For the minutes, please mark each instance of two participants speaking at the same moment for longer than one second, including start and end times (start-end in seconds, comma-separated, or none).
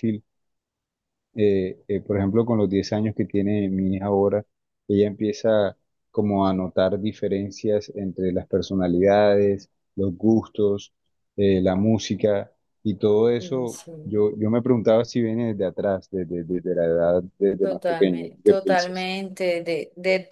17.6-19.1